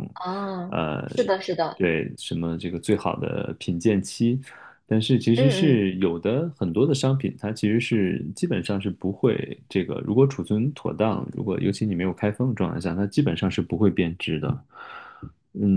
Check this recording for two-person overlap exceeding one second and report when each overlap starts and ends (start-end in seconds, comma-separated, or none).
none